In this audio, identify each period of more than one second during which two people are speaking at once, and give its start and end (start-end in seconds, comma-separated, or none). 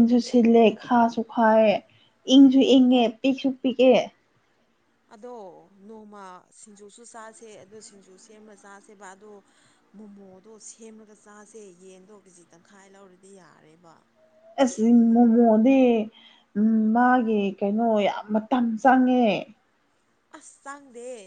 none